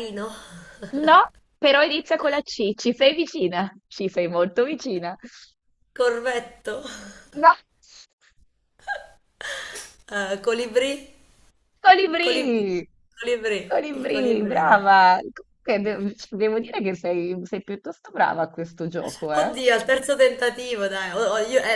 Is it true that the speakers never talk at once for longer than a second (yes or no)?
no